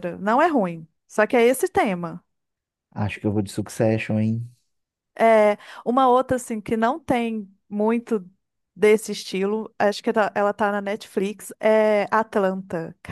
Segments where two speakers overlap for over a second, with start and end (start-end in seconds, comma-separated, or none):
none